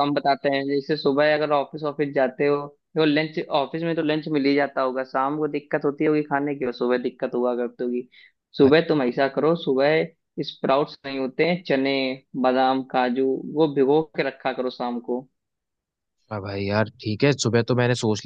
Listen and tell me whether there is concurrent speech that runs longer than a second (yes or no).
no